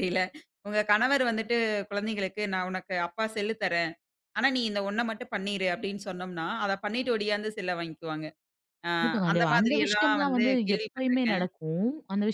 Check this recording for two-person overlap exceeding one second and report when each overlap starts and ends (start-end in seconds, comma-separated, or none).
9.3-11.4